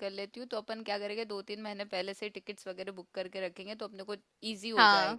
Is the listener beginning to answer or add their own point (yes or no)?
no